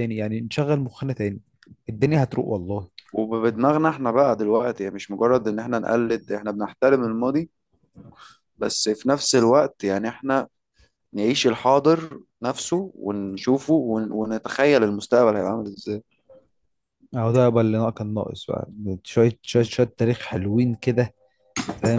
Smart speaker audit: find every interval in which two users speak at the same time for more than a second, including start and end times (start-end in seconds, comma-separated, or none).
none